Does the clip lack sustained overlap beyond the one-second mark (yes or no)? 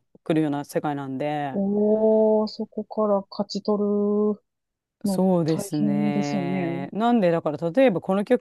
no